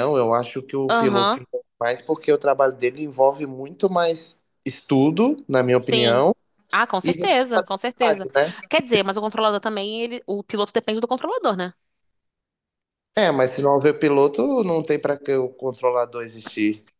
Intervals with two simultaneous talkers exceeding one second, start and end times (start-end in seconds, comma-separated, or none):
7.0-8.3